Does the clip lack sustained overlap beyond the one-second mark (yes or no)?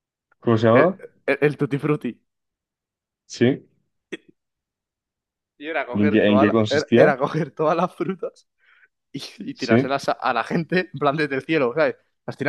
no